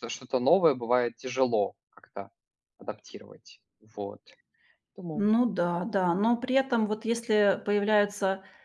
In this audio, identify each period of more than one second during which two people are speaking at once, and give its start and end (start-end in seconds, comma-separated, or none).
none